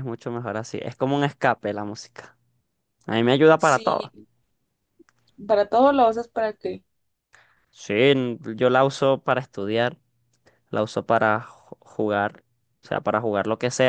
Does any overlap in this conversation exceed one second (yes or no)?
no